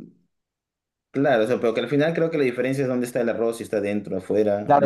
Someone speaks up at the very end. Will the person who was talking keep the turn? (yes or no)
no